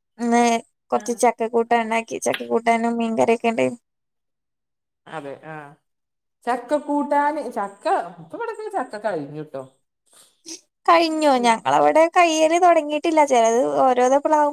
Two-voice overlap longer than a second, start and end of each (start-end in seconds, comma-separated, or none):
none